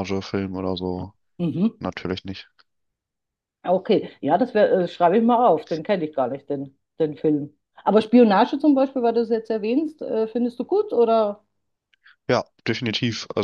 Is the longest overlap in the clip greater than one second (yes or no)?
no